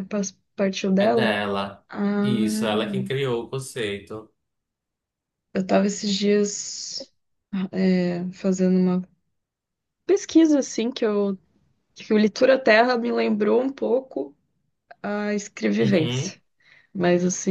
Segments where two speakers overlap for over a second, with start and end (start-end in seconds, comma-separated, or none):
none